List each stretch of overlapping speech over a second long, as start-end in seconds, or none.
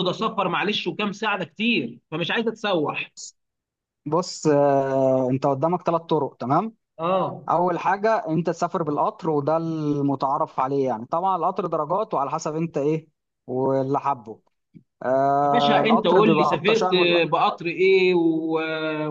15.4-17.2